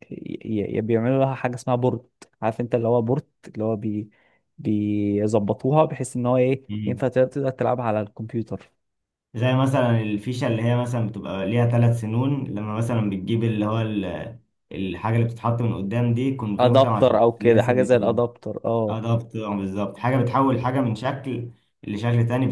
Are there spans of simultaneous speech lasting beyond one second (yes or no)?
yes